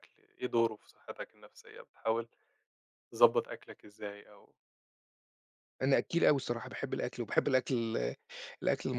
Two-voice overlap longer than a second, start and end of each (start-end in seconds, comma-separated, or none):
none